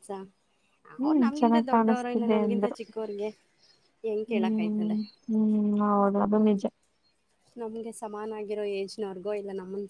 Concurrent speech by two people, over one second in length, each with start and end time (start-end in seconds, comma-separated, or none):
1.1-2.8